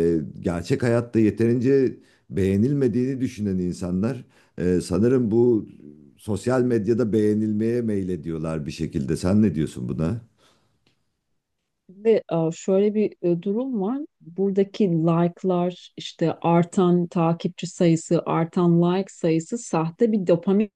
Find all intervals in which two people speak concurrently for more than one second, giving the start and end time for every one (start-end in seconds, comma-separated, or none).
none